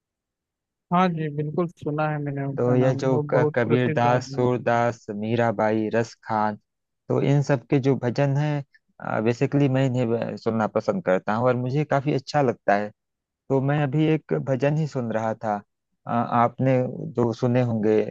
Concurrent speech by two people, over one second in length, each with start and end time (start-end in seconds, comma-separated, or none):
2.6-4.5